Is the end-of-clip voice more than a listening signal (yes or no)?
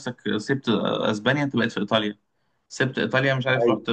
no